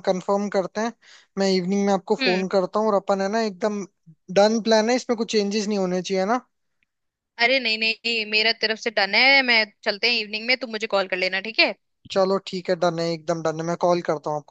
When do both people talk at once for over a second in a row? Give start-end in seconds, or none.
none